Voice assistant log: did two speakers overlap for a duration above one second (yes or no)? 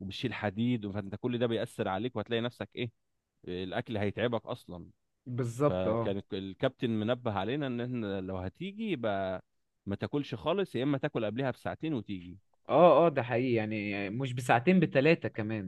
no